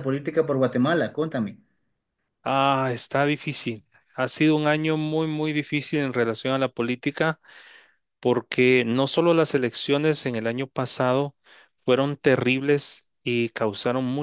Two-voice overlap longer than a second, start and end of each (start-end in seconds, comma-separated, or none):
none